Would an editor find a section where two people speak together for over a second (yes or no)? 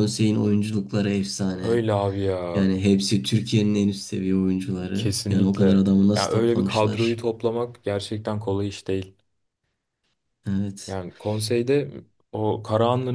yes